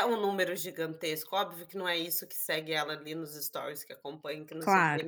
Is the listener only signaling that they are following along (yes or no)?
yes